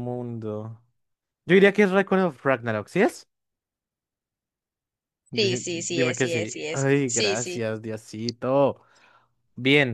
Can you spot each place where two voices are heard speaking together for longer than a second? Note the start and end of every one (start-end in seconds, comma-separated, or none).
5.3-7.7